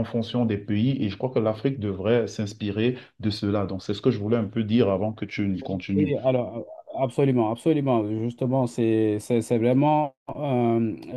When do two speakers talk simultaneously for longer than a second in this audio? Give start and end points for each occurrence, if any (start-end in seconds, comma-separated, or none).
none